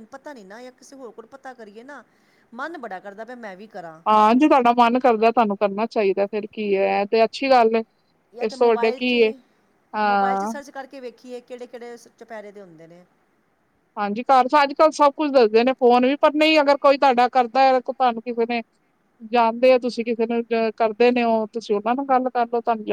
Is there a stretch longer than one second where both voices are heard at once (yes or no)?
no